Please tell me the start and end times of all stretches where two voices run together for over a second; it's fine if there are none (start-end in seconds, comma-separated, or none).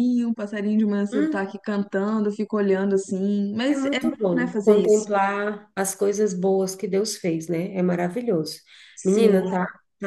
3.7-5.1